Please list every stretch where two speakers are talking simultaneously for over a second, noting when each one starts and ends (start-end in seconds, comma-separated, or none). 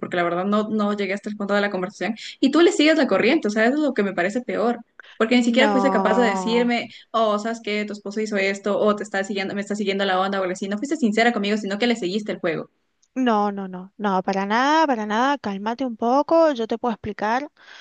5.3-6.7